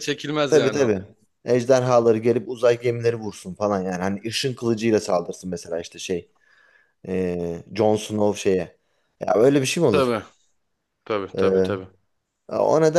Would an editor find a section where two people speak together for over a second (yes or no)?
no